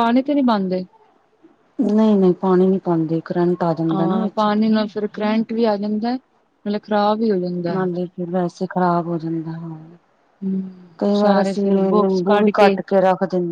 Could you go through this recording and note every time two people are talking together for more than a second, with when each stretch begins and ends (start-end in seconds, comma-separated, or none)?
11.0-12.5